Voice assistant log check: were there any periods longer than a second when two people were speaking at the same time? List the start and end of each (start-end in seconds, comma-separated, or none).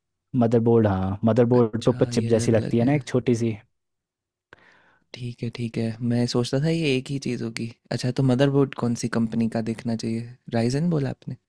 1.6-3.0